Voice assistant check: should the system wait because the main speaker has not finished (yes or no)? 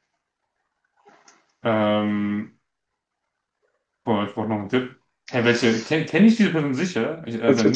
no